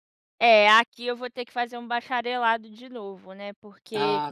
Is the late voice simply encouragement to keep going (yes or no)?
yes